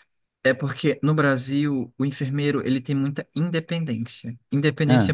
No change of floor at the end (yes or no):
yes